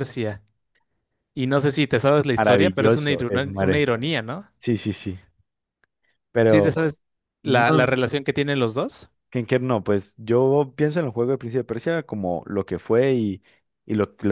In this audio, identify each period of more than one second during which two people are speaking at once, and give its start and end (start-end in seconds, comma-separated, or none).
2.4-3.9